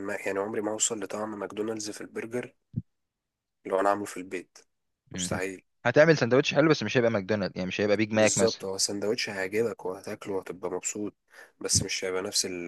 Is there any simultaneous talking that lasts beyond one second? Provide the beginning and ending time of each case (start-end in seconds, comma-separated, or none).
none